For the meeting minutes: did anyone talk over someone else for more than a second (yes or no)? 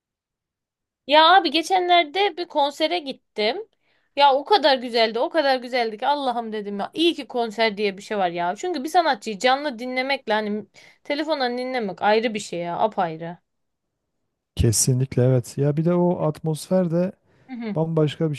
no